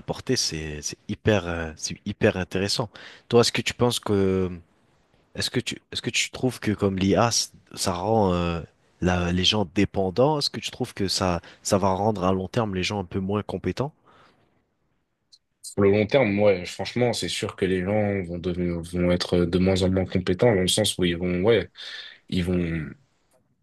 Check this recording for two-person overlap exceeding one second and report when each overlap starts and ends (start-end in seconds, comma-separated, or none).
none